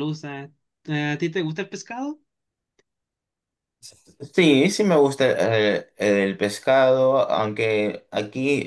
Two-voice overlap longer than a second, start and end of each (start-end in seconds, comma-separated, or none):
none